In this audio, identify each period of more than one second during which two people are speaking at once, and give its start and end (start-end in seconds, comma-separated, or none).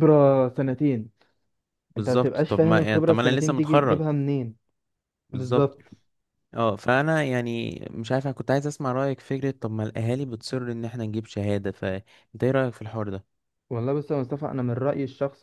2.0-4.0